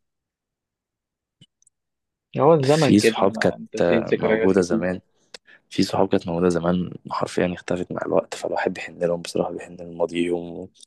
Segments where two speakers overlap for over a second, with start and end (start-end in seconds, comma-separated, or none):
2.6-4.9